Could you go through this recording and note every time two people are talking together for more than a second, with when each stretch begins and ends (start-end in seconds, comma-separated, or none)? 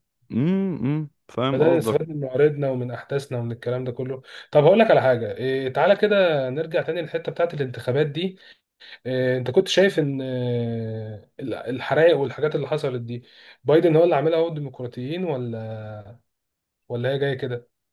none